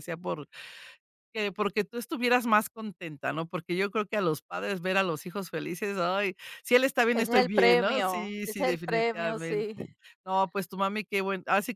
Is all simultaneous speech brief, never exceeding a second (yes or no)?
no